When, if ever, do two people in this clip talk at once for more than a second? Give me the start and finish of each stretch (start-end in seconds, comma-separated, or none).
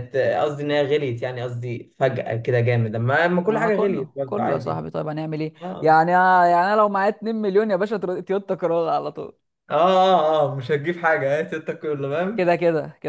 3.5-4.8